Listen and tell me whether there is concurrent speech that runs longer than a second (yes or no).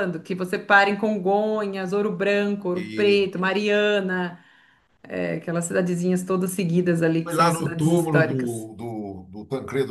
yes